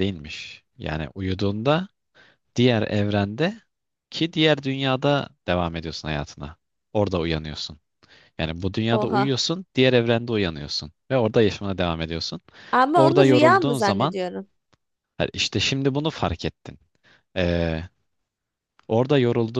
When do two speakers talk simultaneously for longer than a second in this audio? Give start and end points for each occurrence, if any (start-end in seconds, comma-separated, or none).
12.9-14.2